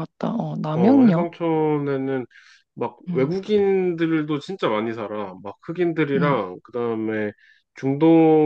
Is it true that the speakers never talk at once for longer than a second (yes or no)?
yes